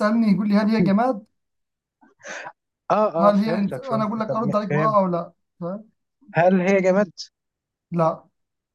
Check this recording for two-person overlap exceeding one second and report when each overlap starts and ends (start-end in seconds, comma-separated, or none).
3.2-5.0